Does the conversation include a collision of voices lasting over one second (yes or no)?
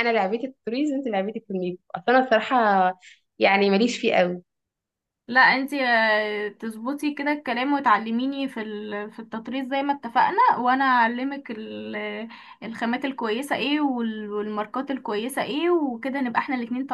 no